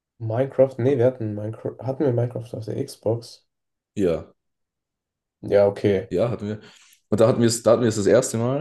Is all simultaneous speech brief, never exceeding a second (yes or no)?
yes